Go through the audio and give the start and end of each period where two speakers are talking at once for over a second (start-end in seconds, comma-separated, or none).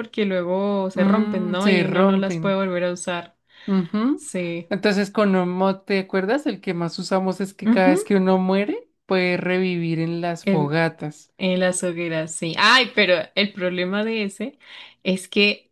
0.9-2.6